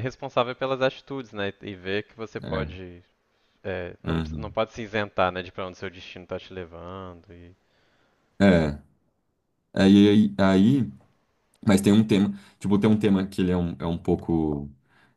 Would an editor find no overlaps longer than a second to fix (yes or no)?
yes